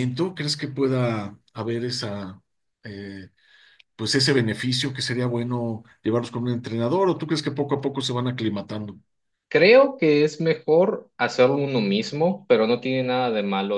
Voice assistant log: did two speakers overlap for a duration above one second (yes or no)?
no